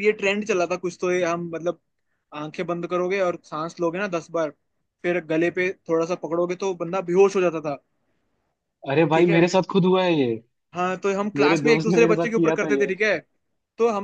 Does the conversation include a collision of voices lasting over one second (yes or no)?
yes